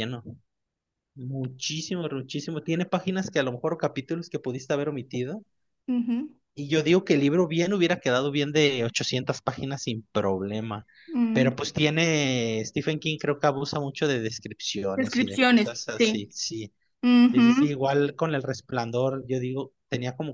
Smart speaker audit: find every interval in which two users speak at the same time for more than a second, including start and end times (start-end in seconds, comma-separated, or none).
14.9-16.3